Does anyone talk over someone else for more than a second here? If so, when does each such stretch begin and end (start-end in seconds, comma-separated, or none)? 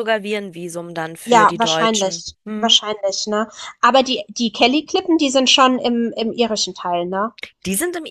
1.3-2.8